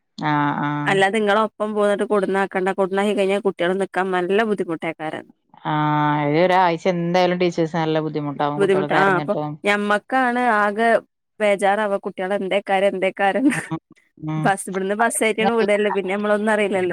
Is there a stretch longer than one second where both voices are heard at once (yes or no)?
no